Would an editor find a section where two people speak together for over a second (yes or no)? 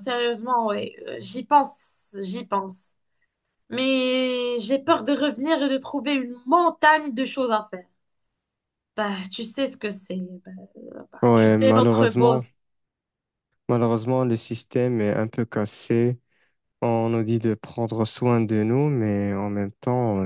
yes